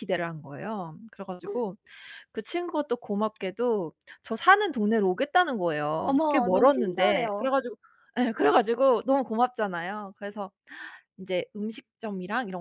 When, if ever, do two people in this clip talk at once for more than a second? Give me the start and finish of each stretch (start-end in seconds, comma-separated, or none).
6.0-7.5